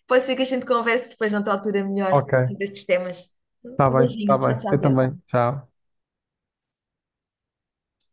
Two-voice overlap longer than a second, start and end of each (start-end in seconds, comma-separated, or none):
3.7-5.2